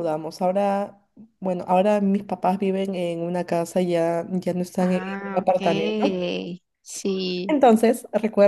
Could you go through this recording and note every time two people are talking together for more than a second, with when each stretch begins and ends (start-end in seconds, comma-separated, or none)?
4.8-6.2